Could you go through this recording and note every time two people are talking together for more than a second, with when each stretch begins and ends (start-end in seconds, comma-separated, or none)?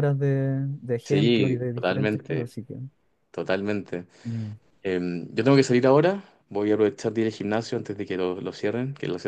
1.0-2.5